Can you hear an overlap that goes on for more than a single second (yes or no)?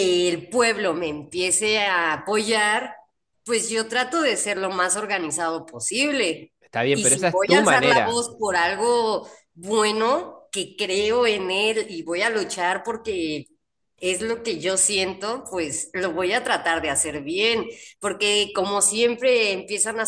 yes